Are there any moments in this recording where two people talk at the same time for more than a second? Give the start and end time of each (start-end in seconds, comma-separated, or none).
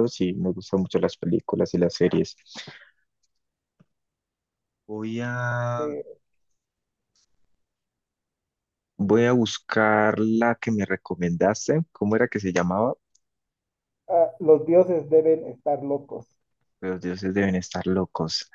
none